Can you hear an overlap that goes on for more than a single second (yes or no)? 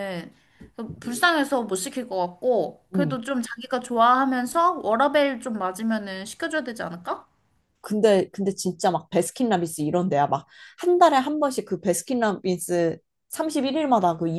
no